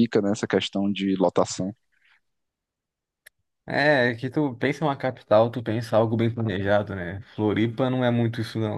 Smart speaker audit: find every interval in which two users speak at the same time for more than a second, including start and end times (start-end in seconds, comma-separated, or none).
none